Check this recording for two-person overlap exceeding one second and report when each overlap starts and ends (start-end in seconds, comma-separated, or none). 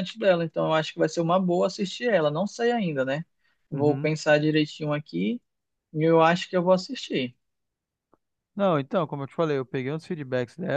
none